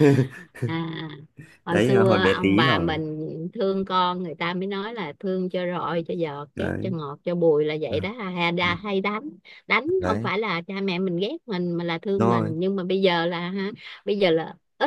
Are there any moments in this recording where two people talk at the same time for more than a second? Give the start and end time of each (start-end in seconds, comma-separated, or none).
1.7-3.0